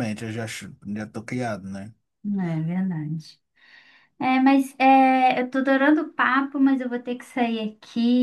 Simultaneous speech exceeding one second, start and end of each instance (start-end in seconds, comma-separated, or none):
none